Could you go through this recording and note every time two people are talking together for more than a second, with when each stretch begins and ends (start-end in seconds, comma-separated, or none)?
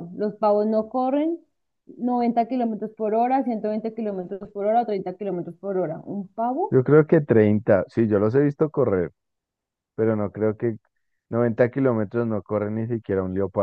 none